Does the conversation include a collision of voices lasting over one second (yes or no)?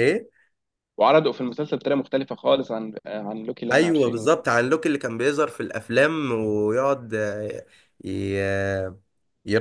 no